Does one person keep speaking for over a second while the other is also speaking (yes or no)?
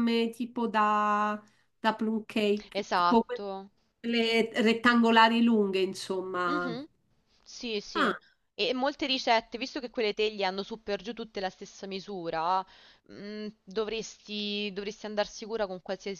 no